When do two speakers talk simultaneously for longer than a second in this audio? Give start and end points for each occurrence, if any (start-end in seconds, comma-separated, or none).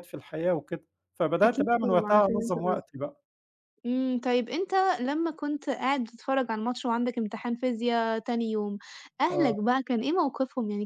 1.4-2.8